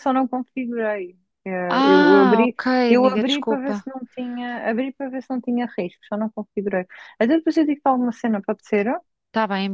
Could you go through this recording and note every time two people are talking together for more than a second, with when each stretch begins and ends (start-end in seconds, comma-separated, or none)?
1.7-3.9